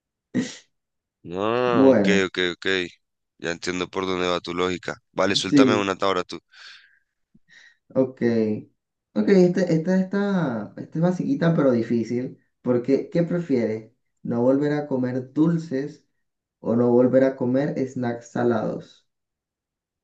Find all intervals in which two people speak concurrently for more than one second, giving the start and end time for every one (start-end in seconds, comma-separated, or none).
none